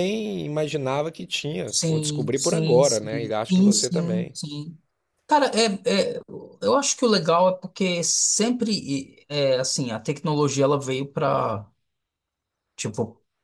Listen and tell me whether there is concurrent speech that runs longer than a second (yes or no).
yes